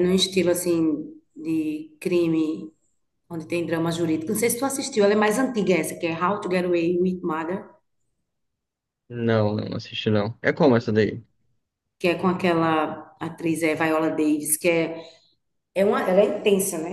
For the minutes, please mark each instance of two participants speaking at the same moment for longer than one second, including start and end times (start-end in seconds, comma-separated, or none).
none